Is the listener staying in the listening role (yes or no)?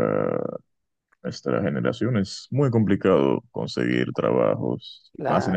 yes